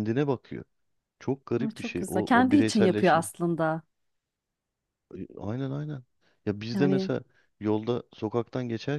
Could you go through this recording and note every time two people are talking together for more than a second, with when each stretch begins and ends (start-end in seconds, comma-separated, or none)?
1.6-3.2